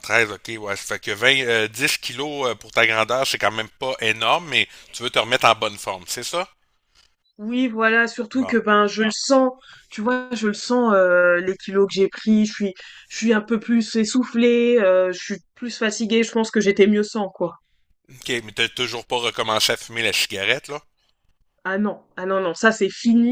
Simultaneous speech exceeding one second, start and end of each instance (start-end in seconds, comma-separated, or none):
none